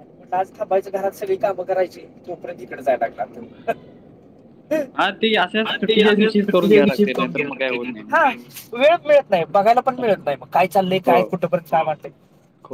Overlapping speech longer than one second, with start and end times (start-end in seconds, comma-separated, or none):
6.3-8.2